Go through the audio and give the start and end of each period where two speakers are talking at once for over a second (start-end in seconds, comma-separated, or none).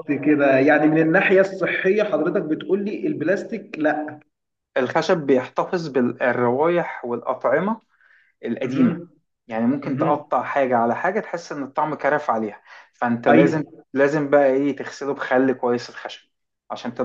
none